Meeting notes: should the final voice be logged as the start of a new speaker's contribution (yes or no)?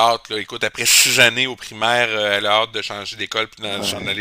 no